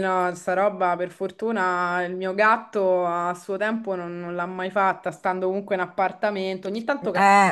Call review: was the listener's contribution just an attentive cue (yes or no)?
yes